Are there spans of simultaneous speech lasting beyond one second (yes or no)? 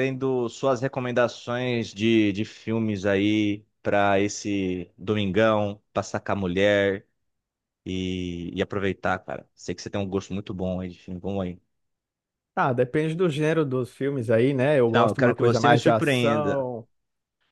yes